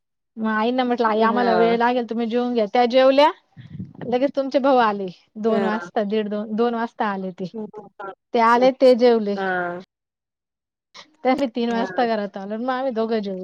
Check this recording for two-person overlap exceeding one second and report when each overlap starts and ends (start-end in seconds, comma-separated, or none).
none